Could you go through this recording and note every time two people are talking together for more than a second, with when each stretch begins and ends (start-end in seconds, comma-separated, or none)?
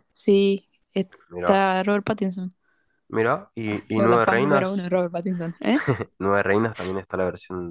3.7-4.9